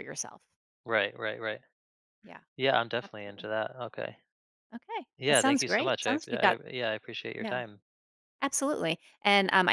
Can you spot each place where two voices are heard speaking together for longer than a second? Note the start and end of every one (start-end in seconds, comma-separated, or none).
5.2-6.6